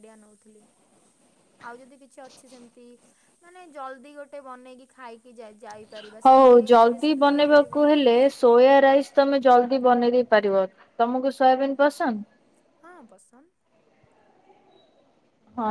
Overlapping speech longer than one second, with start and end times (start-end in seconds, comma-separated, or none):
6.2-7.9